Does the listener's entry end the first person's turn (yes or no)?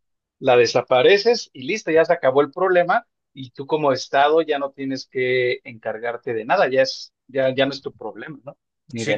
yes